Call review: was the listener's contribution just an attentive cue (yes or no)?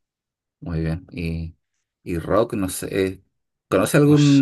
yes